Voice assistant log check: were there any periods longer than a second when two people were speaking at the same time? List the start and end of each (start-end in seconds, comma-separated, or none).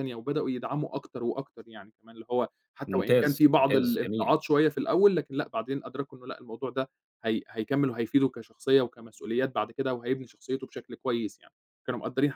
2.9-4.4